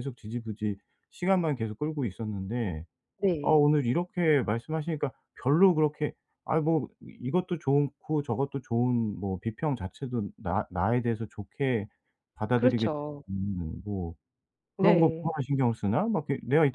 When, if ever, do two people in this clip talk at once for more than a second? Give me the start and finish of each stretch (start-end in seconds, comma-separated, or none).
none